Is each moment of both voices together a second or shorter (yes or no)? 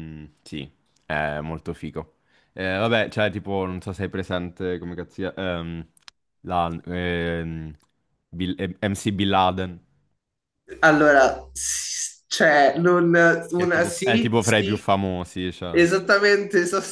no